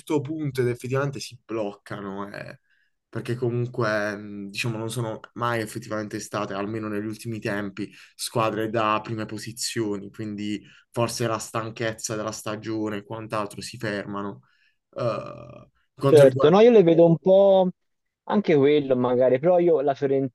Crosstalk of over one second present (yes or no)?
no